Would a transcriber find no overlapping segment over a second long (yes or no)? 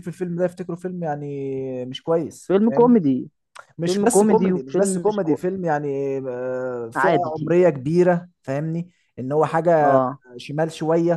no